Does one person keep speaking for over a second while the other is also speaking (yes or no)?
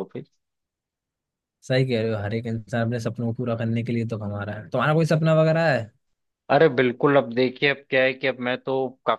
no